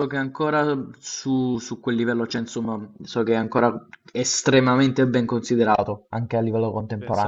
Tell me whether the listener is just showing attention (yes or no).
no